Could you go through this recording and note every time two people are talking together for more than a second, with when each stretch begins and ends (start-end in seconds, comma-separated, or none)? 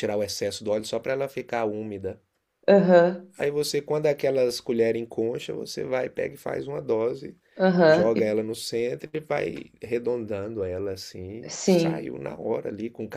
none